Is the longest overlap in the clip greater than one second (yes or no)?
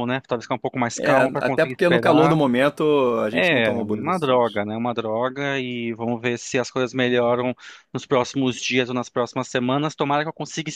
yes